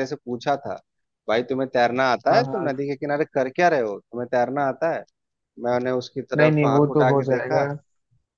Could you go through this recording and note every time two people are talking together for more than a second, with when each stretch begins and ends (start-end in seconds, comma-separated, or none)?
6.3-7.6